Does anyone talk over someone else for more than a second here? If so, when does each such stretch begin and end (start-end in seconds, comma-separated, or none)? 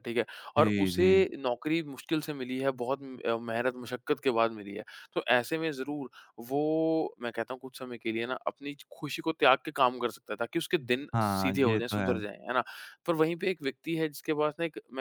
11.1-12.4